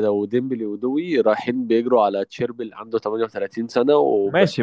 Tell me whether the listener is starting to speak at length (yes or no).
yes